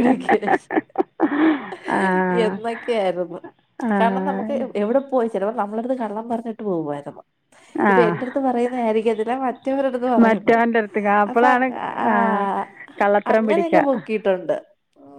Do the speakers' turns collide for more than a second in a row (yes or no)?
no